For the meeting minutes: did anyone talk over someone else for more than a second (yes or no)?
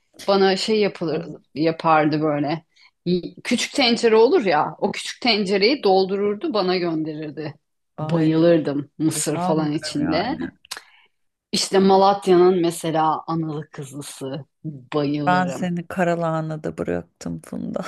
yes